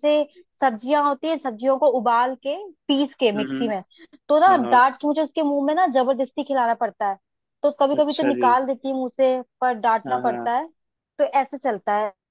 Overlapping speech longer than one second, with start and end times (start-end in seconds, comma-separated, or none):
none